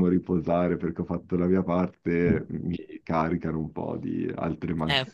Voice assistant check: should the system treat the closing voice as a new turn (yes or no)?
yes